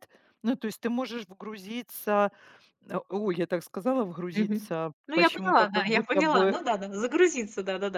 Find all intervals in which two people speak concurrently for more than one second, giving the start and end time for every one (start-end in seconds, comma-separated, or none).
4.3-6.6